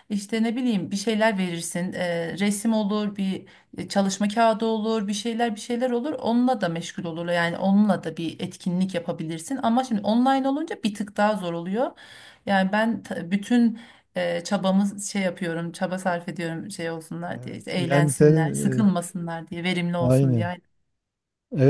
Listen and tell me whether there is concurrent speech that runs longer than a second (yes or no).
yes